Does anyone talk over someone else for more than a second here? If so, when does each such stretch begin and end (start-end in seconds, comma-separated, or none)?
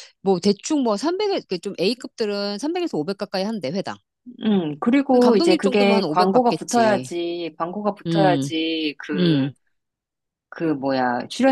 5.1-7.1